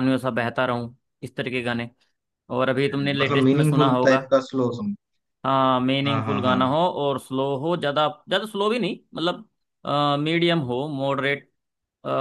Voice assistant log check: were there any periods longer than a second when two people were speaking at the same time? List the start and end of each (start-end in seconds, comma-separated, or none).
2.9-4.2